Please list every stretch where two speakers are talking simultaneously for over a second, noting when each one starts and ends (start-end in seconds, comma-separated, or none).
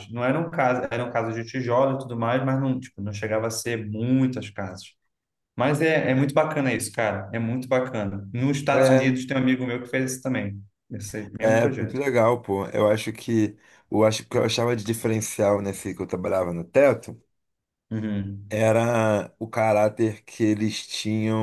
none